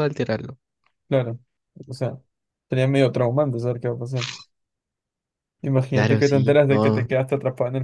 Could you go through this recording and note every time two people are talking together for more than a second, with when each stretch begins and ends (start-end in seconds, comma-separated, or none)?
5.9-7.1